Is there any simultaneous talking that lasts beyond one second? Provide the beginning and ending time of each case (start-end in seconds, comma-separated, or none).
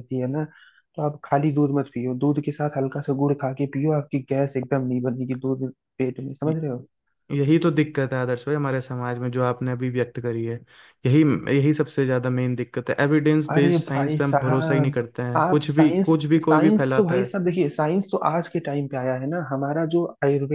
13.5-17.3